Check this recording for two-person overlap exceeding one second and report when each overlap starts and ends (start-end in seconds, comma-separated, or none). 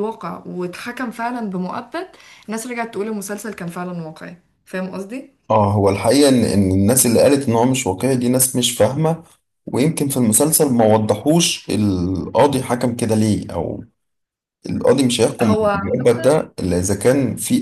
none